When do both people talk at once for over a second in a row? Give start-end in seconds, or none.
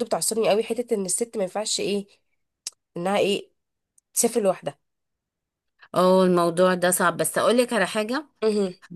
none